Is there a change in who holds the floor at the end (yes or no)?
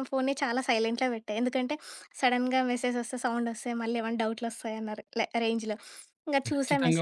no